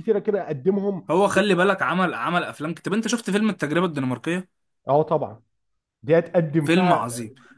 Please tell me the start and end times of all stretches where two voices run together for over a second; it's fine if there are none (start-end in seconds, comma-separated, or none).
none